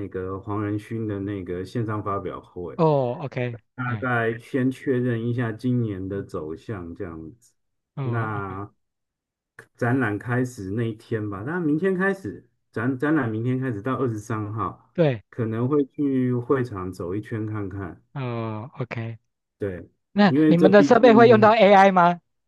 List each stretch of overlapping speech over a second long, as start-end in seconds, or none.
20.3-21.5